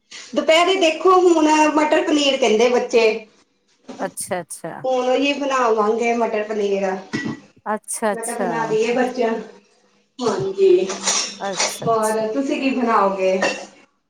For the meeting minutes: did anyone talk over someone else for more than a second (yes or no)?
no